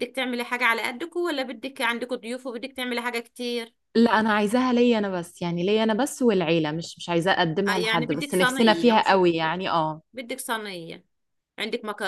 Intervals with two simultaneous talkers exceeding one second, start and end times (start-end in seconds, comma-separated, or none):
7.7-9.6